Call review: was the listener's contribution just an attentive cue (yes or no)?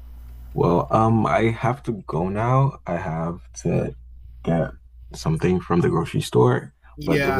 no